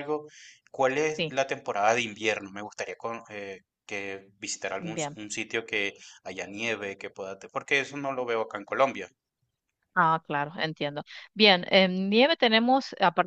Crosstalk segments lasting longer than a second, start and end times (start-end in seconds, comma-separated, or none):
none